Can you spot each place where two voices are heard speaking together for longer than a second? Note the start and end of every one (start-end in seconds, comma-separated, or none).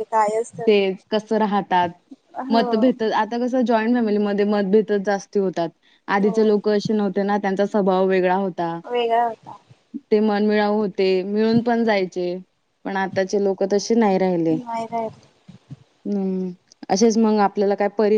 none